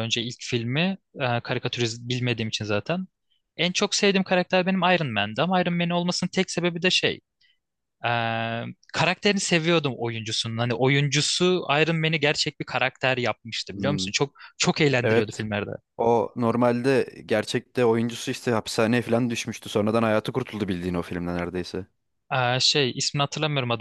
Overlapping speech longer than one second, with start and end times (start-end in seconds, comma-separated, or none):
none